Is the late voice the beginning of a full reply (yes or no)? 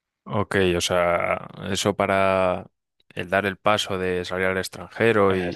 no